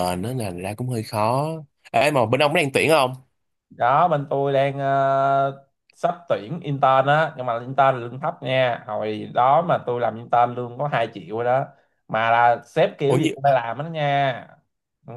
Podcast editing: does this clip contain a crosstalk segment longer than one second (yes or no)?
no